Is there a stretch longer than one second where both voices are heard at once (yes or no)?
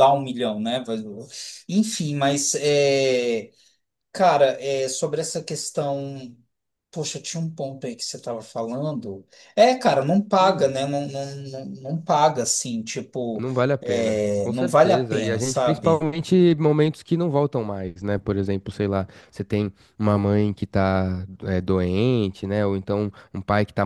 yes